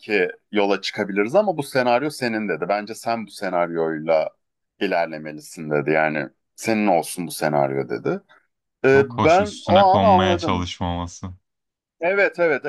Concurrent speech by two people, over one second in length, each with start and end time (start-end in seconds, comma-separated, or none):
8.9-10.7